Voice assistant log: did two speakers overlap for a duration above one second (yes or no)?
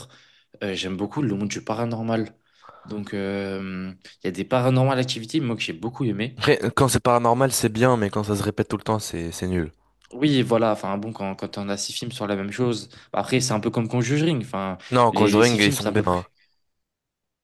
yes